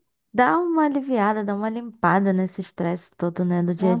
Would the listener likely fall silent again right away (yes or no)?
no